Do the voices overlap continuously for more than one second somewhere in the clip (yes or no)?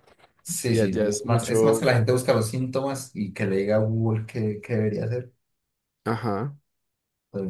yes